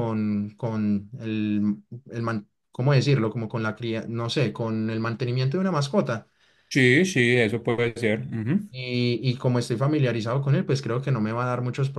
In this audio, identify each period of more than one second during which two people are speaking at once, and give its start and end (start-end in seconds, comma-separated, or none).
none